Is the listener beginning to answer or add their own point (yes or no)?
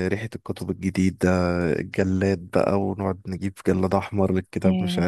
no